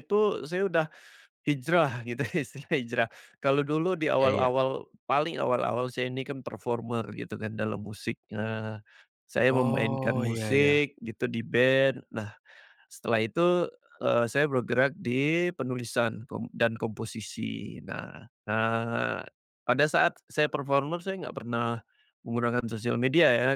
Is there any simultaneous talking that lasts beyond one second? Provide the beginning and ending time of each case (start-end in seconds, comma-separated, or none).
9.5-10.8